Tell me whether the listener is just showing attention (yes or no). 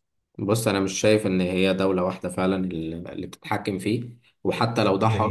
yes